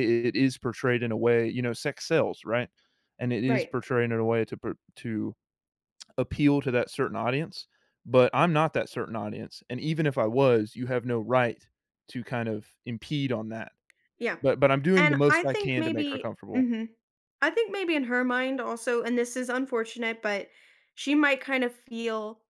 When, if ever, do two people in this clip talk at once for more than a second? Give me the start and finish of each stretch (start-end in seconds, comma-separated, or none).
15.0-16.7